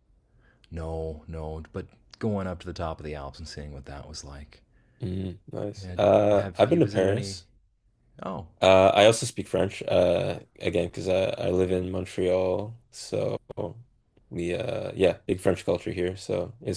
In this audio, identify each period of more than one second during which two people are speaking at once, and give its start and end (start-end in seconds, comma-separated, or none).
5.8-7.4